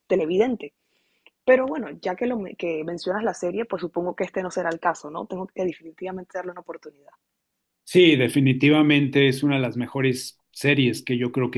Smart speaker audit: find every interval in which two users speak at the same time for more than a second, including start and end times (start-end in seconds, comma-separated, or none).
none